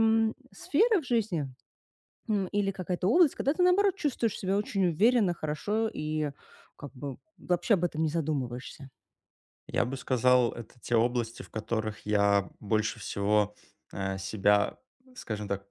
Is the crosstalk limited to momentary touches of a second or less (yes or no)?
yes